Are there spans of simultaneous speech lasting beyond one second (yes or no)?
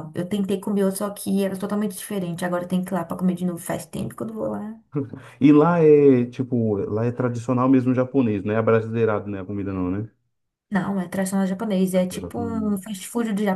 no